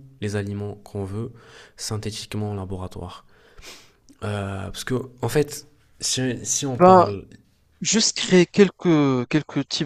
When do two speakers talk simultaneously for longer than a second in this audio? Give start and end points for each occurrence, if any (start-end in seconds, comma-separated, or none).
none